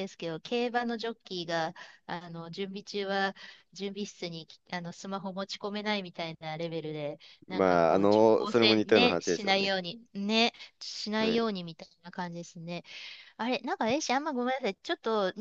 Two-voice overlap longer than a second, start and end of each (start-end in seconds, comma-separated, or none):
7.5-9.7